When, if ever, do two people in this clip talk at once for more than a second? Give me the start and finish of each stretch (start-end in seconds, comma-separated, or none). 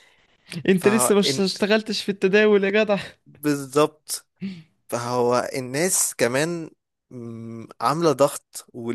none